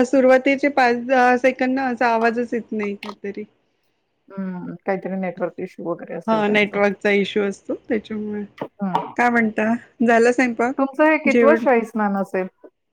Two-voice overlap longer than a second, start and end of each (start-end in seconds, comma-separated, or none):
none